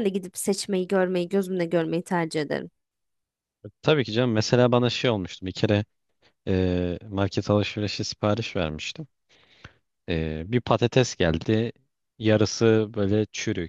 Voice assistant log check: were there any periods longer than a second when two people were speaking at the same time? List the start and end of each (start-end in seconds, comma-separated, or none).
none